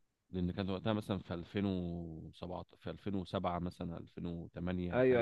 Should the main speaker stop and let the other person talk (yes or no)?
yes